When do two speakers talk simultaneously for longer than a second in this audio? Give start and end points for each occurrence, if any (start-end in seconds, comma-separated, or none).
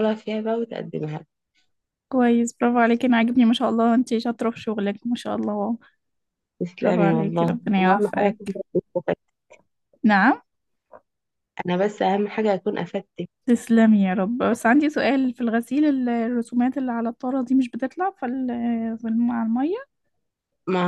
6.8-8.4